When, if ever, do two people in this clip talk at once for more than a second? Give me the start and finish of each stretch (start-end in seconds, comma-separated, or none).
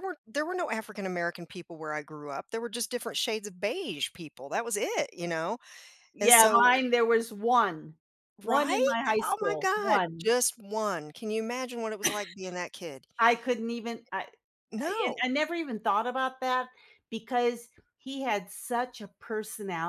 8.4-10.3